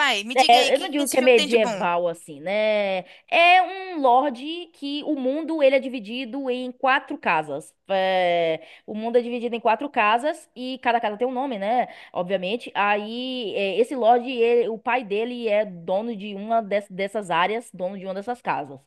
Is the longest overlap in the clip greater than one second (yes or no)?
yes